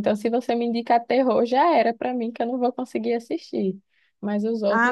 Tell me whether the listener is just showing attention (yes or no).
no